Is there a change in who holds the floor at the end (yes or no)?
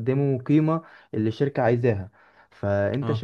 no